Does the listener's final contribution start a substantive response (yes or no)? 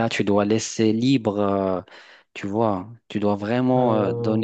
no